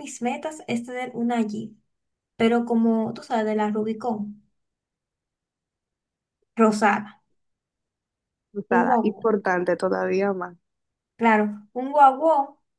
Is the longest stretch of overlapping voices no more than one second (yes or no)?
yes